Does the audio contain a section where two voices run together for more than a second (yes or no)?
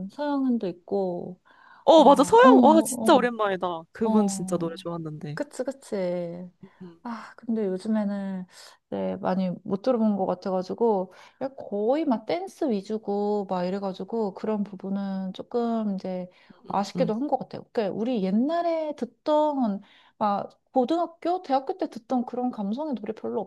yes